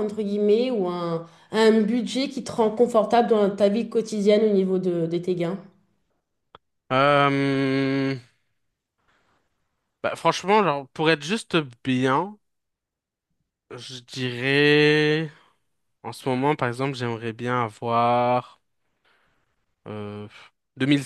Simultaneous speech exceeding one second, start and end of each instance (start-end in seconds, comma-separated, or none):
none